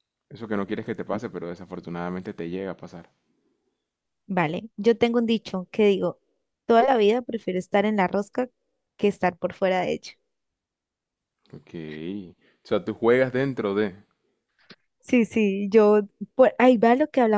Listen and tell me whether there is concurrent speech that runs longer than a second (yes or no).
no